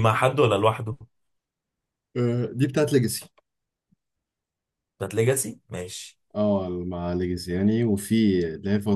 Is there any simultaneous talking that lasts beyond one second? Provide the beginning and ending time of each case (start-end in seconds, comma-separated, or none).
none